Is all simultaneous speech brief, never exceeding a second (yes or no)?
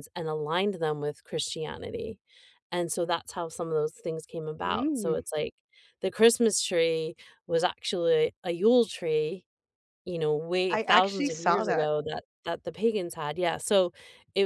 no